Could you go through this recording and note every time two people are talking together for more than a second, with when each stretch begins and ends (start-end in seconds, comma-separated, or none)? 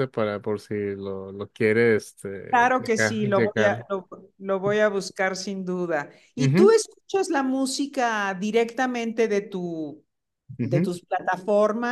2.5-3.9